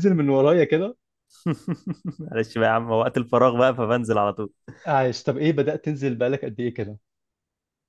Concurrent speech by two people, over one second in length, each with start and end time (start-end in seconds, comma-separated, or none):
none